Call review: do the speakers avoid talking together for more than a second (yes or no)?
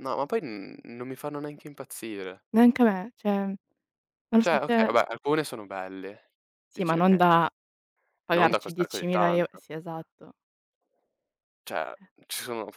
no